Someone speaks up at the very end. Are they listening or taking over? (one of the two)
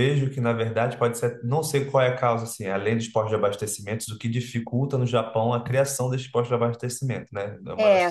taking over